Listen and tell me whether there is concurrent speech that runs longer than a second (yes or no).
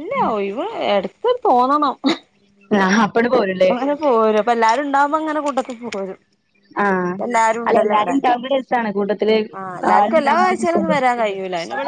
no